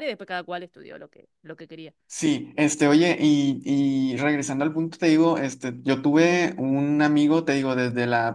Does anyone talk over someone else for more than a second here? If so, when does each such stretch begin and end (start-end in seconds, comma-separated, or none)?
none